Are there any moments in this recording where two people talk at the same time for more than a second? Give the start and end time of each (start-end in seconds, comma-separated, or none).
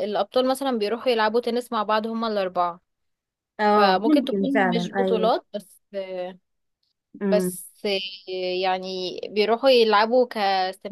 3.8-5.3